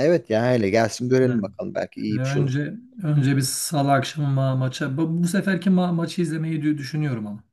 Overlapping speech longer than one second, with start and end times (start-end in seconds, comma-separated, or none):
none